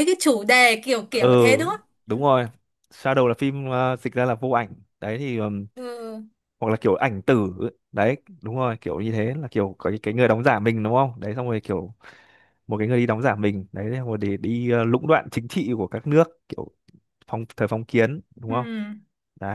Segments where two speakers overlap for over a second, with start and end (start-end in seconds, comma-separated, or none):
none